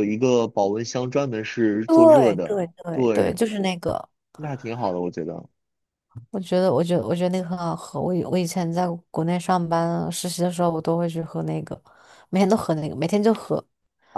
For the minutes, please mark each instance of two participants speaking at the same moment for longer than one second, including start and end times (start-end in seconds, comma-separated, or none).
1.9-3.4